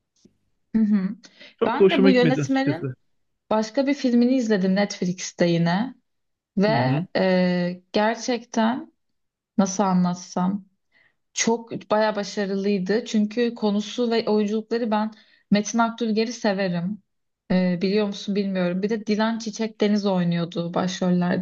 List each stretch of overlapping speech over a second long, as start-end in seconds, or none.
1.7-2.9